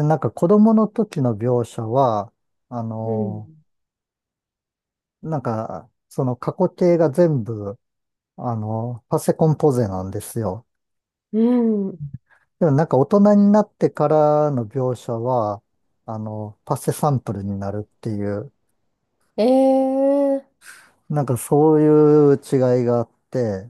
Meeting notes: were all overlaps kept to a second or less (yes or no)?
yes